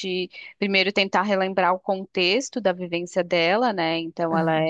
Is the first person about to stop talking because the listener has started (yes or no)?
no